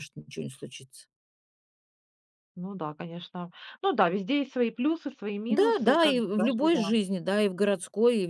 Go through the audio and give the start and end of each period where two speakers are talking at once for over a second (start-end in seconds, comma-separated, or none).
5.5-7.0